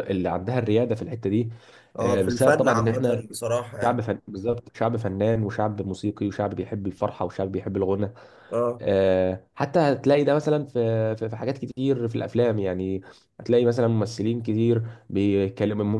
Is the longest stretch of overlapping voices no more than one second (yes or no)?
no